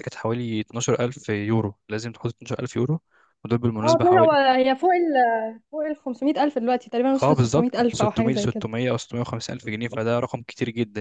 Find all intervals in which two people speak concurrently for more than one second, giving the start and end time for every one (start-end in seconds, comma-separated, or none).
7.2-8.6